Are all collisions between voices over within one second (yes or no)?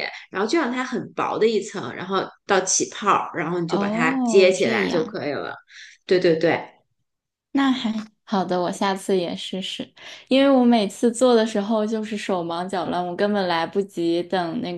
no